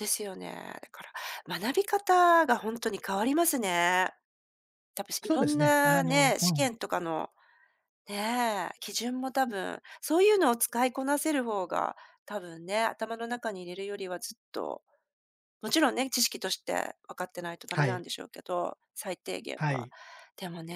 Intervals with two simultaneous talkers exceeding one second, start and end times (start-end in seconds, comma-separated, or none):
5.2-6.7